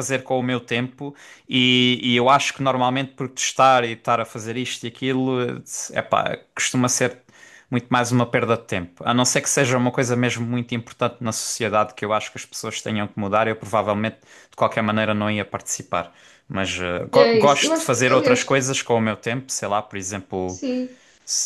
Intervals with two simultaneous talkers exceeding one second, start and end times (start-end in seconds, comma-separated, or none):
17.1-18.5